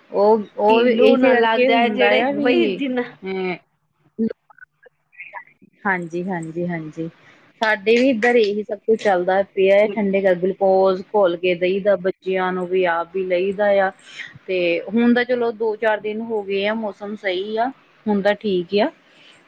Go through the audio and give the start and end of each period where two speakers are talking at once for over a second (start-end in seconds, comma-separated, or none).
0.7-2.5